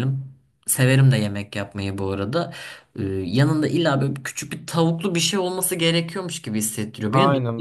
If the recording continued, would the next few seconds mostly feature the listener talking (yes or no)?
yes